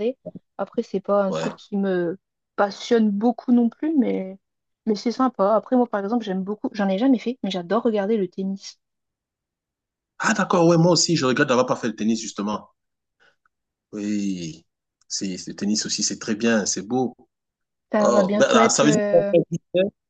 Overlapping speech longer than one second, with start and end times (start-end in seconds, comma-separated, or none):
18.0-19.3